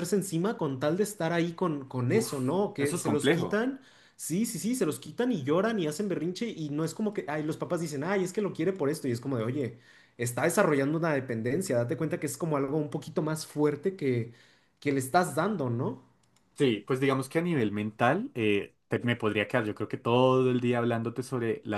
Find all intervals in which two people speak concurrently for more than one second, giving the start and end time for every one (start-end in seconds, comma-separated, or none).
2.1-3.6